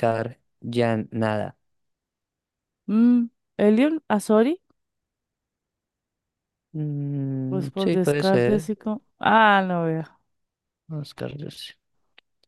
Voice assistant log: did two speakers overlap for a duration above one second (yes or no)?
yes